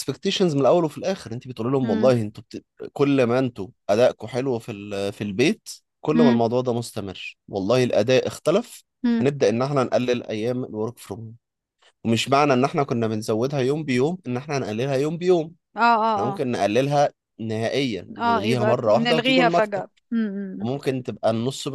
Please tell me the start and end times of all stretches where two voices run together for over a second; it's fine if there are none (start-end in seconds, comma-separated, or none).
18.2-19.9